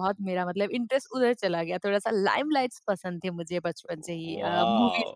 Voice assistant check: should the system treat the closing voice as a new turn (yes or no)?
no